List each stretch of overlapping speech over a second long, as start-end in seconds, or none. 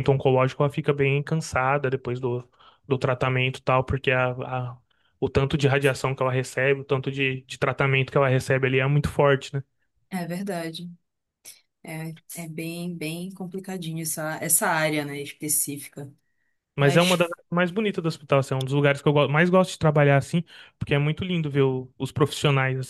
none